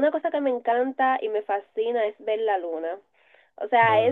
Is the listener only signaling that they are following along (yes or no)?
yes